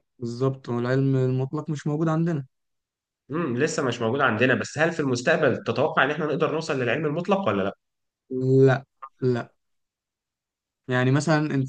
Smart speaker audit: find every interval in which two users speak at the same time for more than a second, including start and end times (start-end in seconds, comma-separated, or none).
none